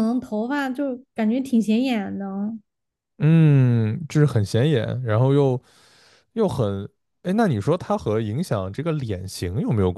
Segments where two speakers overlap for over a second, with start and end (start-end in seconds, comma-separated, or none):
none